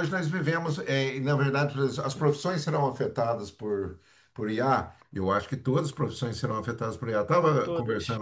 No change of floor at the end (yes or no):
yes